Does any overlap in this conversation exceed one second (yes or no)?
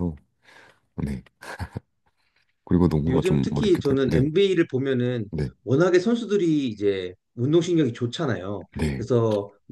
yes